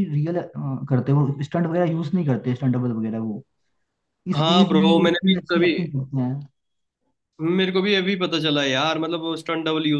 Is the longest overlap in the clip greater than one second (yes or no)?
yes